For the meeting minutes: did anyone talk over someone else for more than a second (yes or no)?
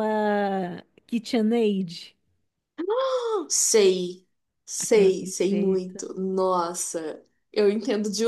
yes